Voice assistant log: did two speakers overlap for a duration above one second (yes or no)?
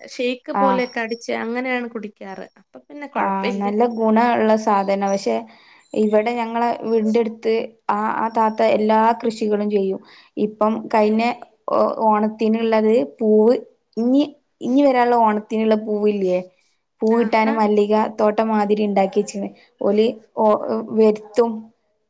no